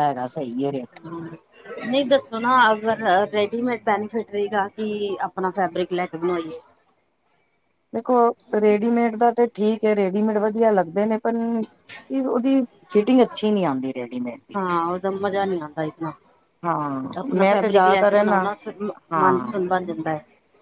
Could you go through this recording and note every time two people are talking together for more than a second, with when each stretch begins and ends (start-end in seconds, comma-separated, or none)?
17.2-18.5